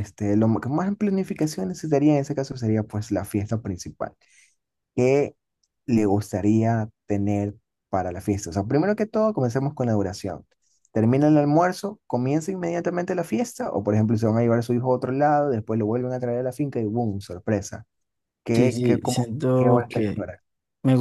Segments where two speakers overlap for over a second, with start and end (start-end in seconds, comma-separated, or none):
18.5-20.1